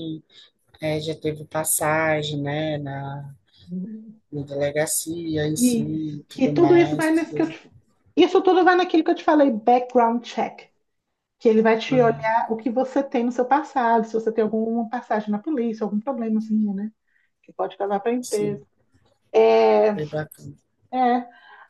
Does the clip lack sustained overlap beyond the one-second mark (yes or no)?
no